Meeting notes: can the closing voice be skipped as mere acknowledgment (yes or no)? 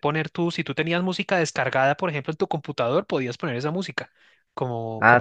no